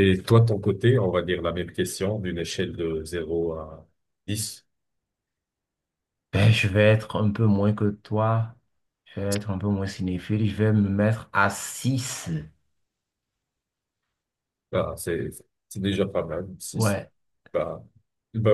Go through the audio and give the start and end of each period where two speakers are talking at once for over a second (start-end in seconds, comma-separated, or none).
none